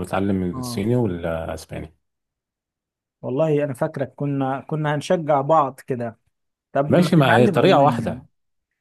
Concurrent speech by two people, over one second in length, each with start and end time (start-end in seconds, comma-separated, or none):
6.9-8.2